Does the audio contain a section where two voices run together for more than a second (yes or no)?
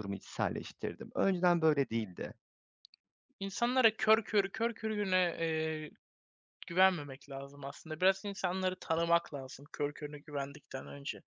no